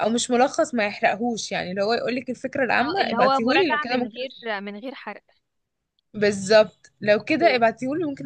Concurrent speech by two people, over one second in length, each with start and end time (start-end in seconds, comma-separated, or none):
2.8-4.4